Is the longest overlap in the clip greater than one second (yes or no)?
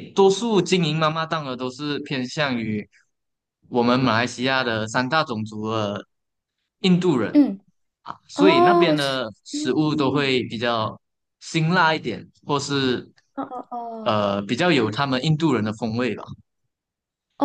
yes